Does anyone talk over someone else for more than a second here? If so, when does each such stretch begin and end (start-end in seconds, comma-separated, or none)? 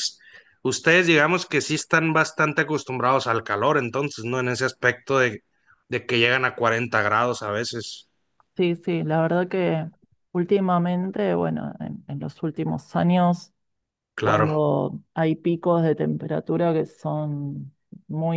none